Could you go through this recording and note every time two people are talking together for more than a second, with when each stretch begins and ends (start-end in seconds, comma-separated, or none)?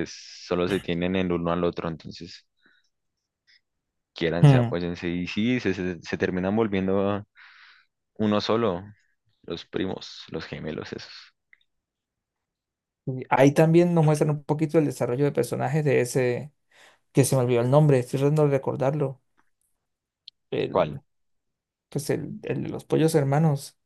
none